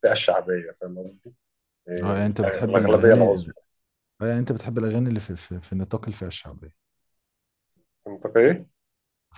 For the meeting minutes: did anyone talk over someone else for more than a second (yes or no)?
yes